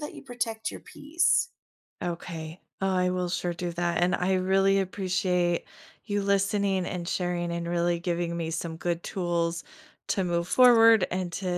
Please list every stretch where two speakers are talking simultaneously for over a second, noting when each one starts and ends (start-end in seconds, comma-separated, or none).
none